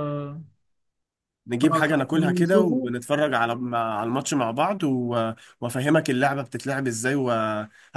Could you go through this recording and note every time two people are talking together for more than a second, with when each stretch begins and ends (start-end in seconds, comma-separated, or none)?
1.6-2.9